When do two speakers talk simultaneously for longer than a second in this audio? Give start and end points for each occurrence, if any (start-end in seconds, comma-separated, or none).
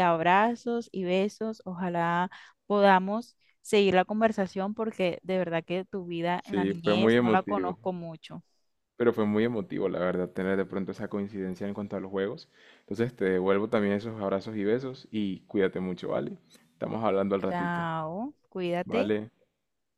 6.4-7.7